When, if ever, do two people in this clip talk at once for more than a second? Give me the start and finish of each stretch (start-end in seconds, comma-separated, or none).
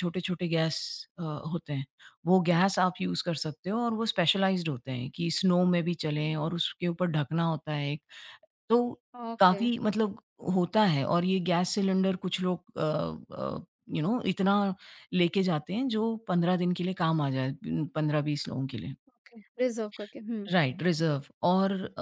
none